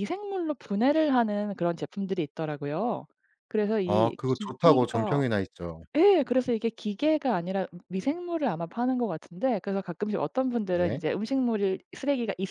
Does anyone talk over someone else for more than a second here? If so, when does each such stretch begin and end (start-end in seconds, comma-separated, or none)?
3.8-5.2